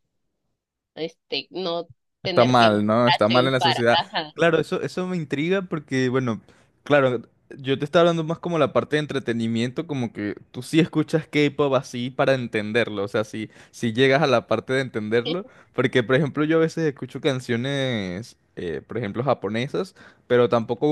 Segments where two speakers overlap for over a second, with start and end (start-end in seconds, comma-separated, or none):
2.2-4.3